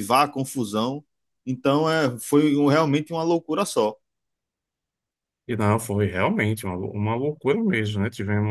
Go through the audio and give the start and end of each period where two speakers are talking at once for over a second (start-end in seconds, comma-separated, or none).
none